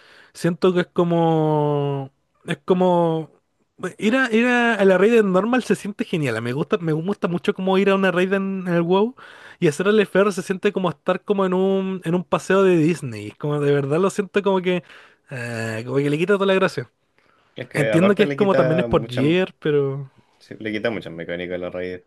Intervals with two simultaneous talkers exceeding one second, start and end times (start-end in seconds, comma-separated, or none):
17.7-19.2